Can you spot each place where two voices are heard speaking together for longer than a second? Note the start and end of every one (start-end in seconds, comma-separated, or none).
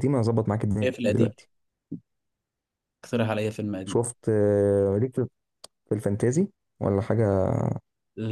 none